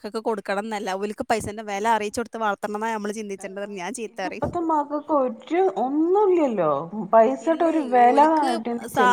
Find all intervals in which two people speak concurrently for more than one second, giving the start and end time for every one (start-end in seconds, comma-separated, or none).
none